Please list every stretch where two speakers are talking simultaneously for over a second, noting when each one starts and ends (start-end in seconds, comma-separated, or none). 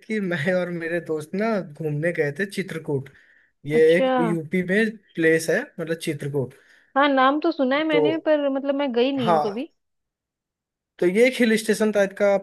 none